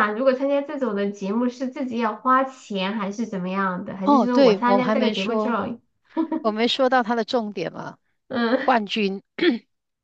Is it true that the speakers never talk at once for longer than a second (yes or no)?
no